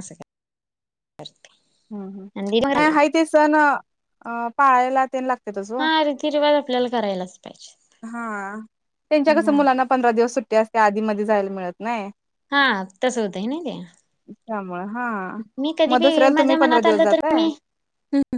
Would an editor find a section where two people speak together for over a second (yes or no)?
yes